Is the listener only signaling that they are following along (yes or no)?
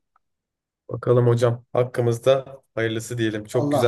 no